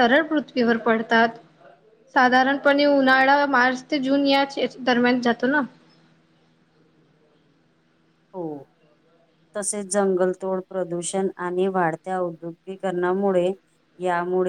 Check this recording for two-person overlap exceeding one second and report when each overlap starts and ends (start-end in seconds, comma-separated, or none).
none